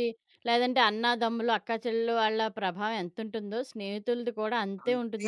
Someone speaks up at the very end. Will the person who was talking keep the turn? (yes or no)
no